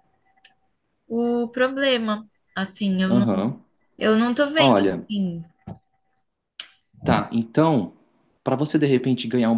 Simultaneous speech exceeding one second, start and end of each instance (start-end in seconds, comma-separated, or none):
none